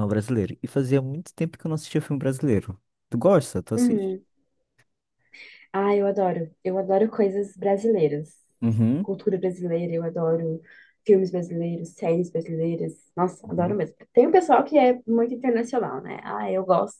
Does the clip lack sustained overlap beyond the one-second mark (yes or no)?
yes